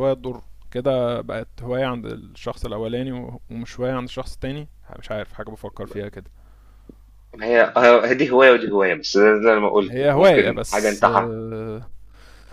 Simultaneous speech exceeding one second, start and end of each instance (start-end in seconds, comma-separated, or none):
9.9-11.3